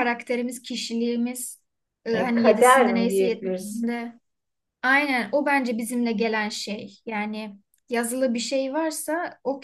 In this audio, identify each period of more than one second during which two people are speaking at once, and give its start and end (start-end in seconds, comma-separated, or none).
2.1-3.9